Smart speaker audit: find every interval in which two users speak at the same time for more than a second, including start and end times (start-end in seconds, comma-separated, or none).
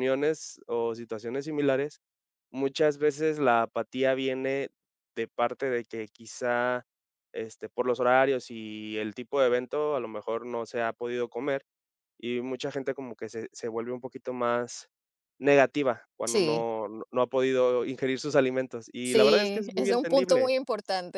19.0-20.5